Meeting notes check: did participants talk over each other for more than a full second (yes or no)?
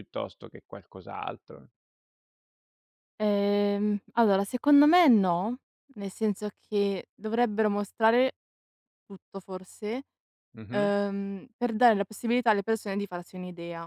no